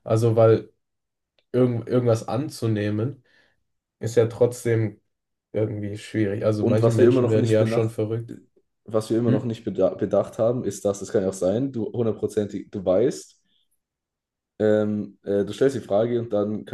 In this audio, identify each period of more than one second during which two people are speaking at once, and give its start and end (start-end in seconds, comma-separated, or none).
6.6-7.9